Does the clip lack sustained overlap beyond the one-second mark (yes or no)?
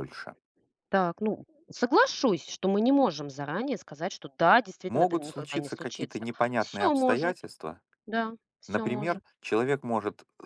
no